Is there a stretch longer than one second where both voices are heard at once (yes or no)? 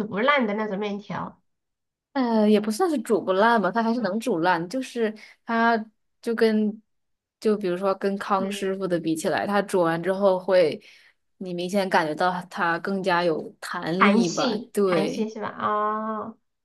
yes